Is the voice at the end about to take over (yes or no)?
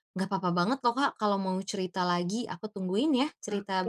yes